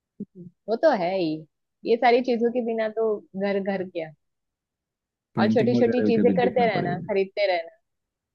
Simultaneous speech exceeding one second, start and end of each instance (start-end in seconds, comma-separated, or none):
5.4-7.1